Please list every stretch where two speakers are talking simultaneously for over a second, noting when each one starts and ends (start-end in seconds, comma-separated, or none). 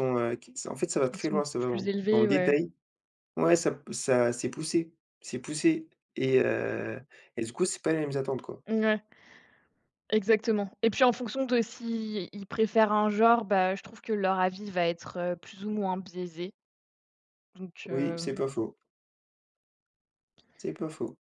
1.0-2.5